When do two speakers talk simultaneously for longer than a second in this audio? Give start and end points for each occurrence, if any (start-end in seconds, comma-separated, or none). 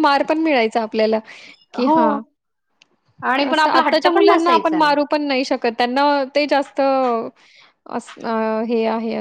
3.5-5.1